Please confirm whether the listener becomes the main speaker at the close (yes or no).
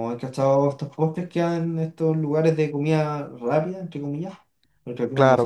yes